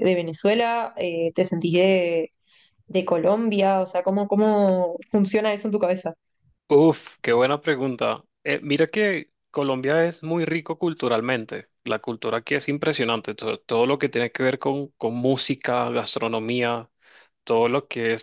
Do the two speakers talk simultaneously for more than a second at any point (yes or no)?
no